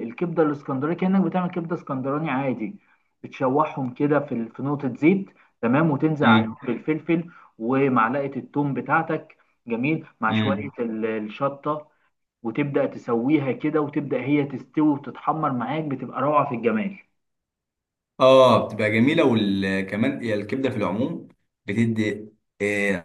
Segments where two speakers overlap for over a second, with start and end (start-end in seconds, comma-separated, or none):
none